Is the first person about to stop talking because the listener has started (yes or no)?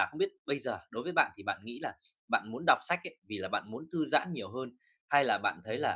no